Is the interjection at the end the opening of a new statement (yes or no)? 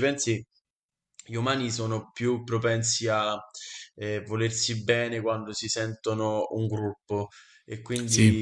no